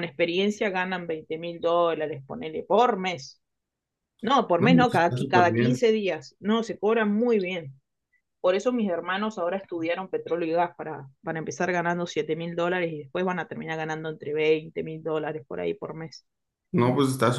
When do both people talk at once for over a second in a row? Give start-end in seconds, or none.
4.6-5.8